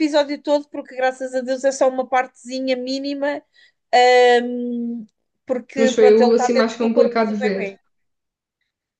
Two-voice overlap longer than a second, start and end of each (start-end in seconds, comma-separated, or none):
5.8-7.8